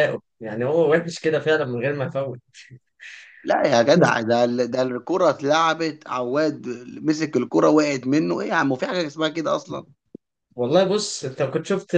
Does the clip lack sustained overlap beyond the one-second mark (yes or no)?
yes